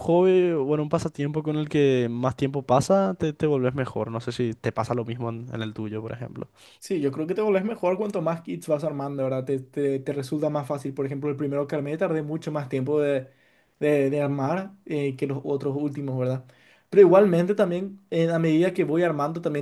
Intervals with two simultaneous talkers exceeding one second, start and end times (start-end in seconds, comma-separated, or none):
none